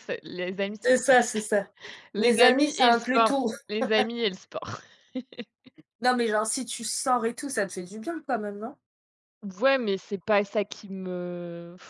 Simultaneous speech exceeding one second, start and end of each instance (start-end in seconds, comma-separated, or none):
2.2-3.5